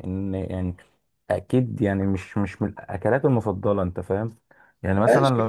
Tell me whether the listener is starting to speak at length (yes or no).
yes